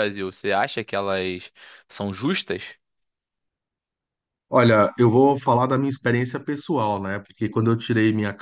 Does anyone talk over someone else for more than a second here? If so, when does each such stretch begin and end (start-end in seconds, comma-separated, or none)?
none